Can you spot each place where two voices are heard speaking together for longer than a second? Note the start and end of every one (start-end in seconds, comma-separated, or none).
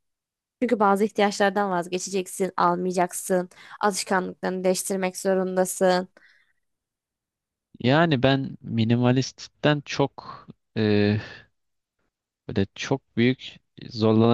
none